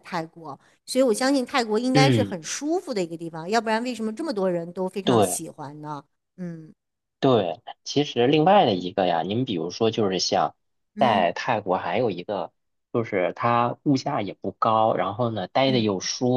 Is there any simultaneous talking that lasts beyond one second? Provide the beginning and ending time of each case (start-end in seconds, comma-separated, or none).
none